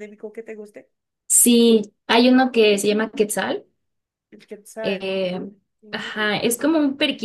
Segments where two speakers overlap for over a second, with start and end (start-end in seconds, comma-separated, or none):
none